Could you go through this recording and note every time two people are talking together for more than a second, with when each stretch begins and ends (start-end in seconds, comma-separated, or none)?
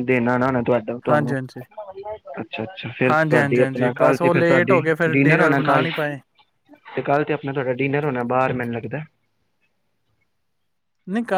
3.1-5.8